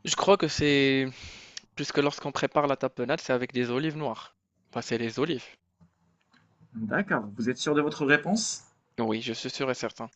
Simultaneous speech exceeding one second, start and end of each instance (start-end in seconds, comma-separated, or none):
none